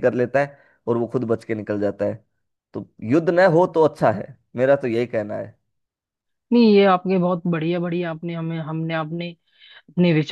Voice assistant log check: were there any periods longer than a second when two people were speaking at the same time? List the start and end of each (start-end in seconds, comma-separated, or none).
none